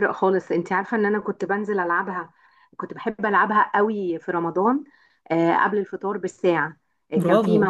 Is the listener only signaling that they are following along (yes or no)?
yes